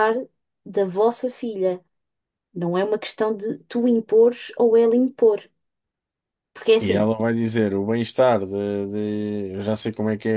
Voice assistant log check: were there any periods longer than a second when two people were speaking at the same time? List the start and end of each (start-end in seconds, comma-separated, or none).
none